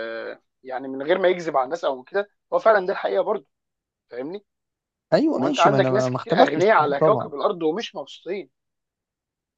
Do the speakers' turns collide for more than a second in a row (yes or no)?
yes